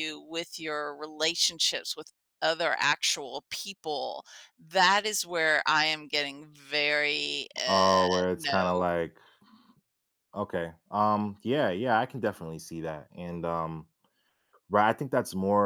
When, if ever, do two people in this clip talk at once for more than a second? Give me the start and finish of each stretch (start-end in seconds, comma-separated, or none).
7.7-8.9